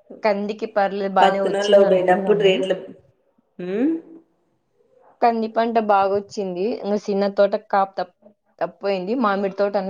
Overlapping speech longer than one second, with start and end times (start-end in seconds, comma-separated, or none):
1.2-2.5